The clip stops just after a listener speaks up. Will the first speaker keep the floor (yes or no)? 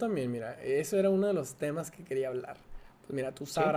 yes